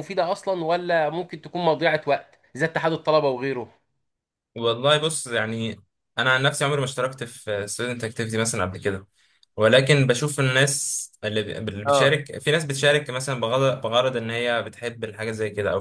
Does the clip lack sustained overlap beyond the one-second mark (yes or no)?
yes